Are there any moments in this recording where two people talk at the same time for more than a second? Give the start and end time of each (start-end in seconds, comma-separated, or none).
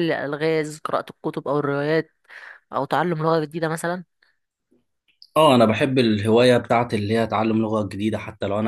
none